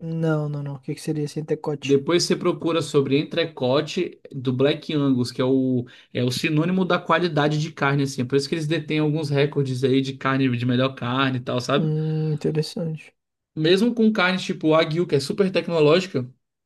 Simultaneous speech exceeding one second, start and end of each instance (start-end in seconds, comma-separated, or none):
none